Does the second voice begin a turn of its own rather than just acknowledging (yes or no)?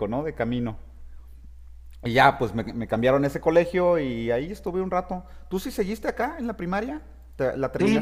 yes